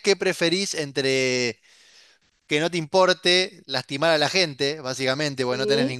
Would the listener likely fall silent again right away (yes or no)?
yes